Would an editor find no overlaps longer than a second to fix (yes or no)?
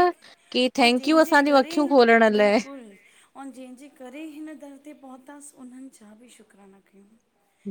no